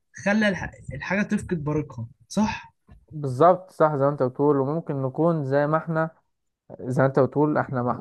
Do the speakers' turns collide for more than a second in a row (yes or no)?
no